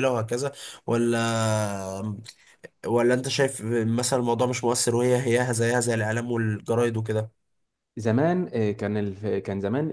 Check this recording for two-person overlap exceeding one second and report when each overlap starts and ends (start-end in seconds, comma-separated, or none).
none